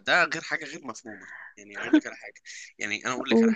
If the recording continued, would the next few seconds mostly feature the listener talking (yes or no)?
no